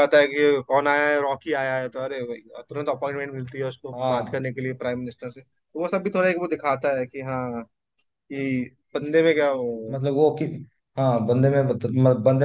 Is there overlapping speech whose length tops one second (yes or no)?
no